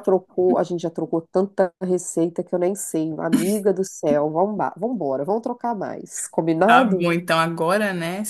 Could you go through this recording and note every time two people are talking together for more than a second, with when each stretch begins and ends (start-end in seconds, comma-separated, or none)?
none